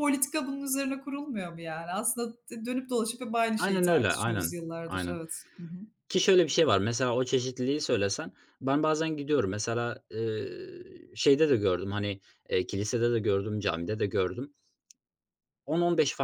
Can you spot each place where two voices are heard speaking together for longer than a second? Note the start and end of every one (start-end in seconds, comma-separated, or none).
3.6-5.2